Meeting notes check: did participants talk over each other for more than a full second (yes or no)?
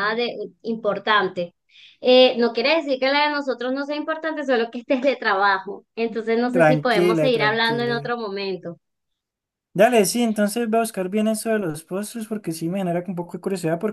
yes